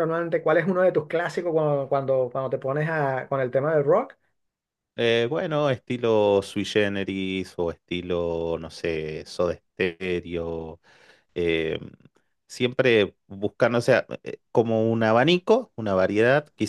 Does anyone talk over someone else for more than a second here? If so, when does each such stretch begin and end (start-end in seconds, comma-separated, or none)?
none